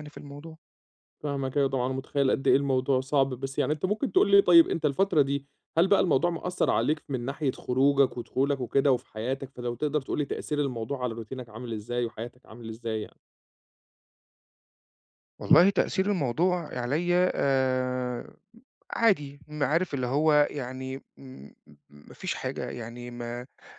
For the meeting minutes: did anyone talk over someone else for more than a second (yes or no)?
no